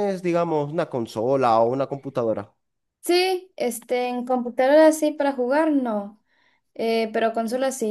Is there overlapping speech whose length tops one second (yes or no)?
no